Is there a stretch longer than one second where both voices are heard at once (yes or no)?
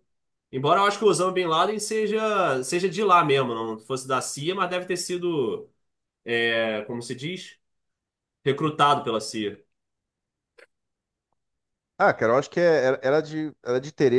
no